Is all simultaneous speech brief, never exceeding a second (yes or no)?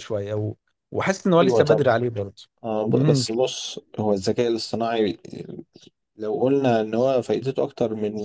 yes